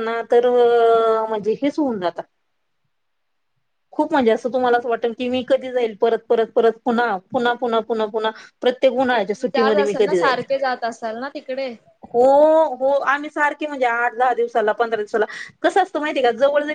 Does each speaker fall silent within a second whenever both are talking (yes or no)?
no